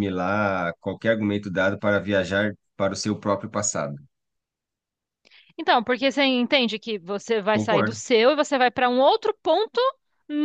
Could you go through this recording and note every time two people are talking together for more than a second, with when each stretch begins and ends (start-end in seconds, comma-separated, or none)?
none